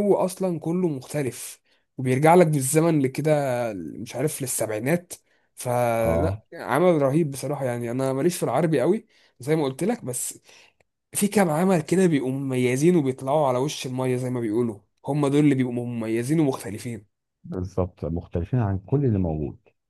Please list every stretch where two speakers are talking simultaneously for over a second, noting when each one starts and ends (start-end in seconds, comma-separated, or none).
none